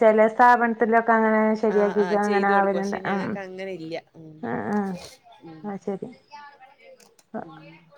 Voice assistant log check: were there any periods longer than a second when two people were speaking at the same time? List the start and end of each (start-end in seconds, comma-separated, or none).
1.7-3.3